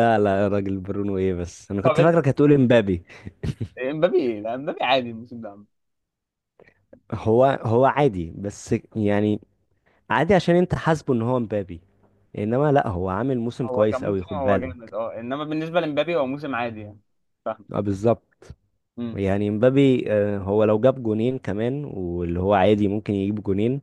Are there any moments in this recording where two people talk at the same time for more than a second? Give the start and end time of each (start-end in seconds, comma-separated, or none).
13.6-14.9